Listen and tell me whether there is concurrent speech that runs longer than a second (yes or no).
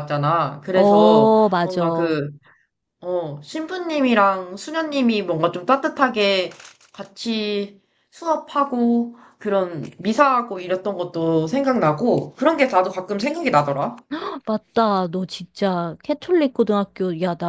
yes